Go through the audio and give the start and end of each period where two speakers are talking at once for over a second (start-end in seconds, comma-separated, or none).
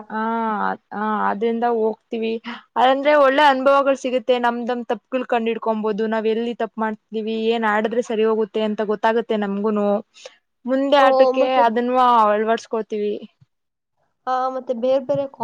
none